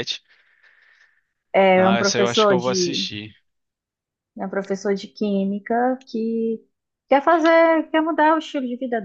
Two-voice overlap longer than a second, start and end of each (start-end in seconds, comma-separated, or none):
1.8-3.1